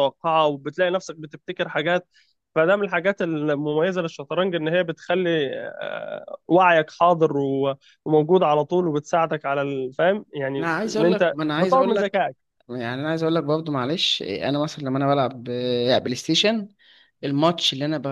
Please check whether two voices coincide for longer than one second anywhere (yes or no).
yes